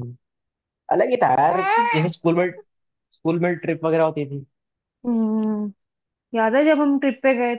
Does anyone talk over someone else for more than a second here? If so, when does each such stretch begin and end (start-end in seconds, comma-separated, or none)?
none